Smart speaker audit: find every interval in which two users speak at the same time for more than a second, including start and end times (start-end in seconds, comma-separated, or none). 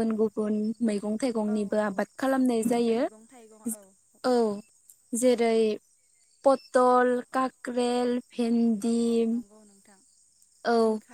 none